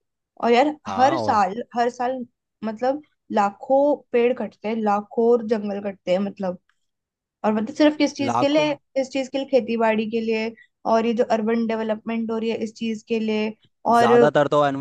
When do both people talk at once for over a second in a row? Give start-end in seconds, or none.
none